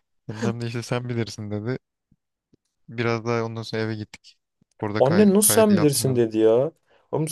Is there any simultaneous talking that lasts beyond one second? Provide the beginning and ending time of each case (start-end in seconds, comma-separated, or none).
5.0-6.2